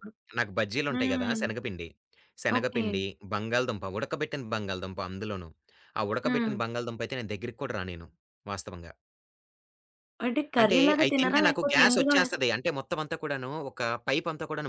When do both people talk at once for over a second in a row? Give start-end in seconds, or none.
10.6-12.4